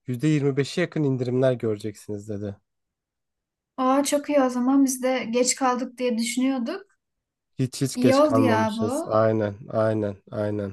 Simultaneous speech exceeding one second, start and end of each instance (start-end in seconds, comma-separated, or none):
7.9-9.2